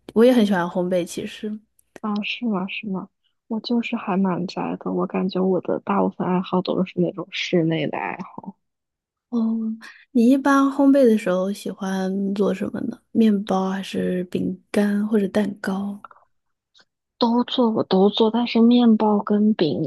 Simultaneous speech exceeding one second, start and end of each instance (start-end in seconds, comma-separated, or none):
none